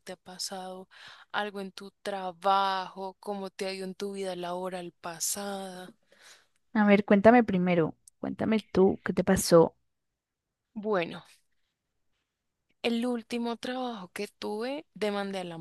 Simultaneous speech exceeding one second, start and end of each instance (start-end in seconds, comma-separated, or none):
none